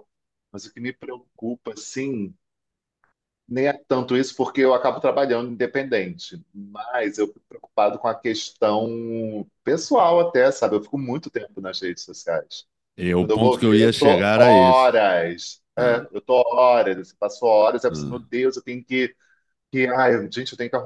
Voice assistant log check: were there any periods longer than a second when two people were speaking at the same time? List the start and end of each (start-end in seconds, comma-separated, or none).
13.2-15.0